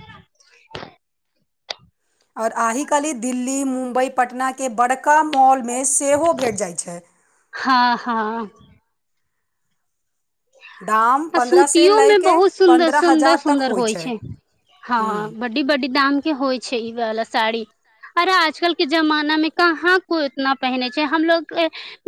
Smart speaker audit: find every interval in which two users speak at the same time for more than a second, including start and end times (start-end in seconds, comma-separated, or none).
11.4-13.6